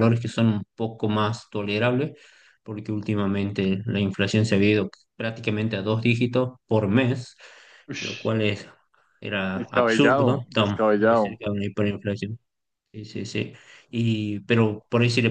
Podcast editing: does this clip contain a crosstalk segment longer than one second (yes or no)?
yes